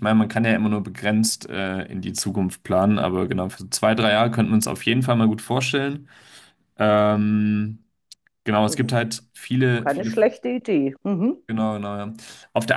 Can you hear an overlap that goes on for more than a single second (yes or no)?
no